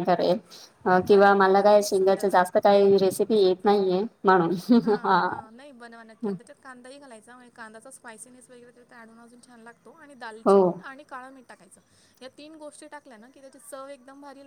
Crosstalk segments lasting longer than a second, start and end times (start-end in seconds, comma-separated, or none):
1.1-2.6